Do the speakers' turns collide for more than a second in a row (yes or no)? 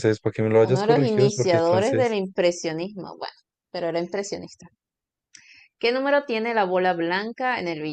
yes